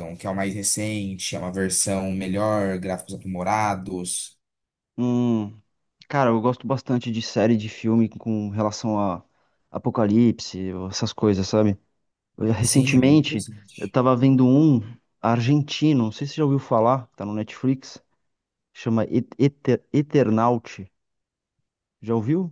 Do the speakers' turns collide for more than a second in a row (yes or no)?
yes